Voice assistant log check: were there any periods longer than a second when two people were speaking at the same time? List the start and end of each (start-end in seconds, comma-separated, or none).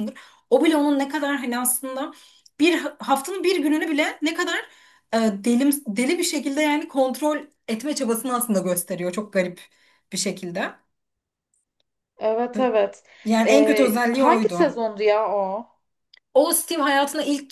13.5-14.7